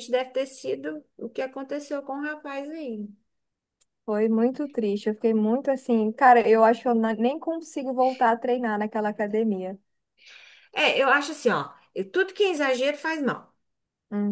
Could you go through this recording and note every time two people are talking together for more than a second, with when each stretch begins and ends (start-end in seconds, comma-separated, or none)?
none